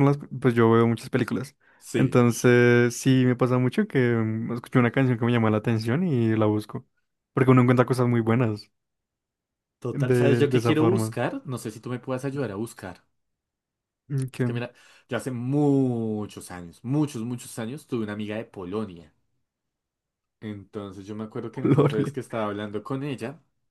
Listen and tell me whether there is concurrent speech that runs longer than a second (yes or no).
yes